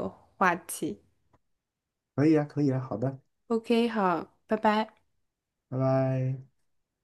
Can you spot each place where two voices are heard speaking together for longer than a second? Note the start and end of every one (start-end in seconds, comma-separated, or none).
none